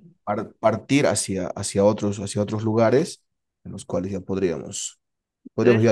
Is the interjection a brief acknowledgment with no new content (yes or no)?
yes